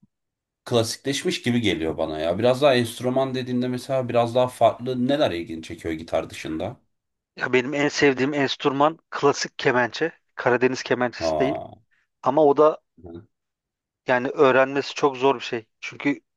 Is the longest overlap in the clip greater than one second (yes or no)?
no